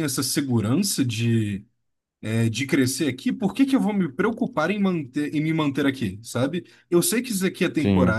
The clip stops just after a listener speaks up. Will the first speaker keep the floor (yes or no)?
yes